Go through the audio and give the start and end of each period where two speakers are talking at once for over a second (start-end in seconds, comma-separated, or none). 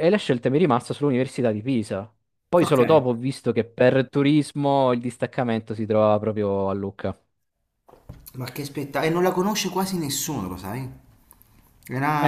none